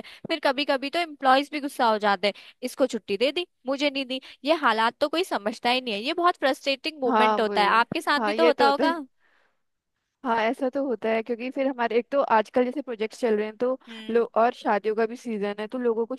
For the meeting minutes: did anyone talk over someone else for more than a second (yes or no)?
yes